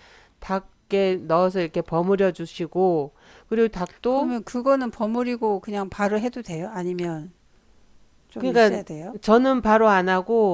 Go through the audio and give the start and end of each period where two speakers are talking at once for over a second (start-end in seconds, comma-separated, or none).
none